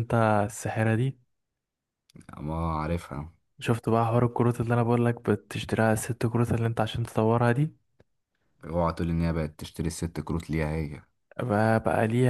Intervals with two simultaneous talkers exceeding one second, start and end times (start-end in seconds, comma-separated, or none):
none